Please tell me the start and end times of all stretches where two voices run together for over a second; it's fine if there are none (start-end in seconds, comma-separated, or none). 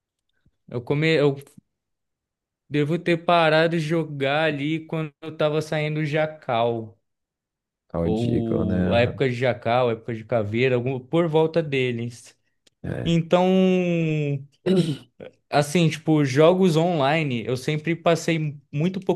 8.0-9.2